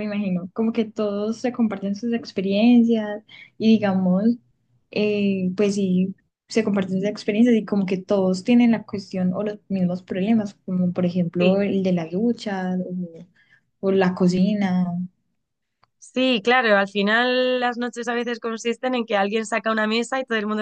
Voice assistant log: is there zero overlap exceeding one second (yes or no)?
yes